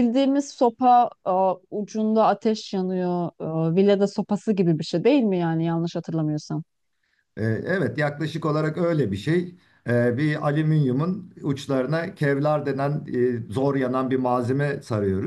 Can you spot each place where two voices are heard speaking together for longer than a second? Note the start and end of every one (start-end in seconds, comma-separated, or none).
none